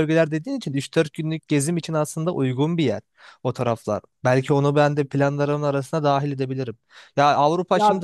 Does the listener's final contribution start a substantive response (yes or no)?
no